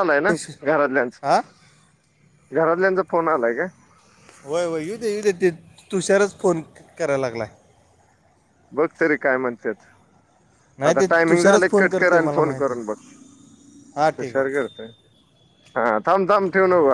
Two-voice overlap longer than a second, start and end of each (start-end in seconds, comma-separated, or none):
10.9-12.9